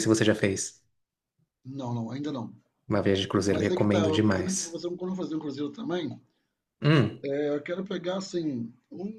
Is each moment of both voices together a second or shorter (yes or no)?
no